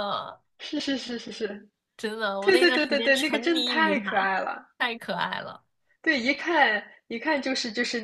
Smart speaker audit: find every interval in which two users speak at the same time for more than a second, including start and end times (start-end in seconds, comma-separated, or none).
2.4-4.3